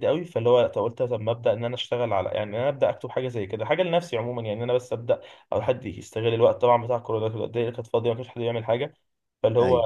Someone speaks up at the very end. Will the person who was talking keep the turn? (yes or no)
yes